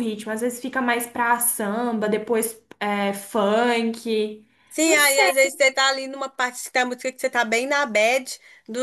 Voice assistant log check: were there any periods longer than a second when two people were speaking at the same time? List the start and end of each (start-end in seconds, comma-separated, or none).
none